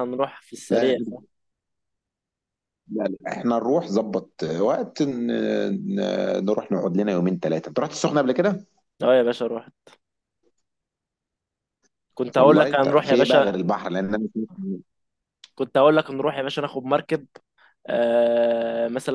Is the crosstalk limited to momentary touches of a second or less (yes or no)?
no